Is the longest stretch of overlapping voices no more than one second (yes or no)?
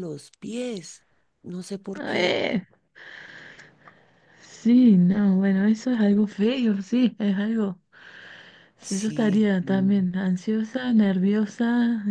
no